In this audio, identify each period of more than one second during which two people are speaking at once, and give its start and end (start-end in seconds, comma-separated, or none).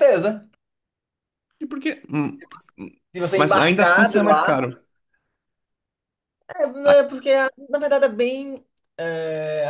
3.4-4.6